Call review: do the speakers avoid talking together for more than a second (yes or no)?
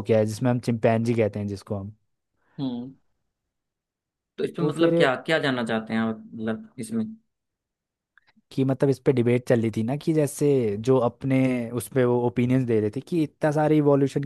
yes